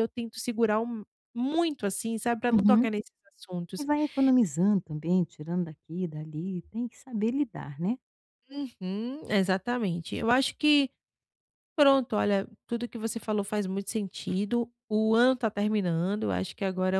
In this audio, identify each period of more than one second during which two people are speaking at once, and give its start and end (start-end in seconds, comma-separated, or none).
none